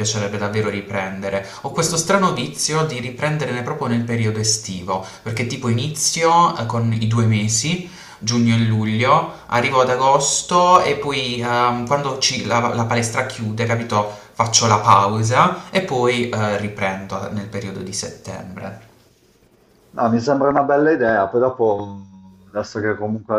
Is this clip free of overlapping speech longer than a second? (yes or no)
yes